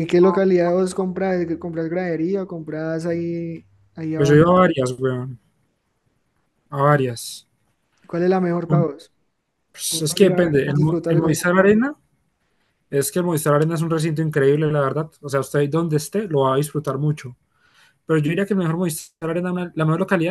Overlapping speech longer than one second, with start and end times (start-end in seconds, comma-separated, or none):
9.9-11.6